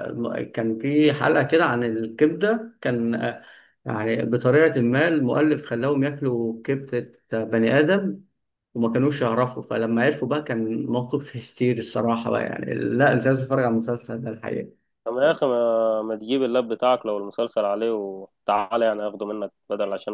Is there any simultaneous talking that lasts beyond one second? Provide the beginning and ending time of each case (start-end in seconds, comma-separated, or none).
none